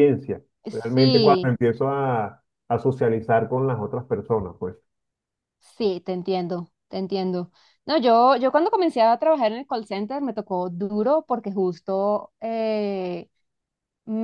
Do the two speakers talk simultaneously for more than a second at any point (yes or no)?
no